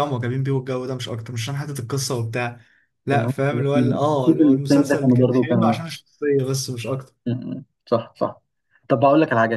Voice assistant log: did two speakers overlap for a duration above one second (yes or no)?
yes